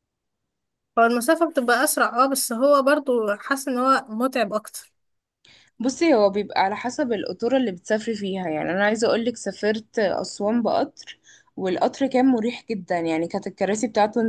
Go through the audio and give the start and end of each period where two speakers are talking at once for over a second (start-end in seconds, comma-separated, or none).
none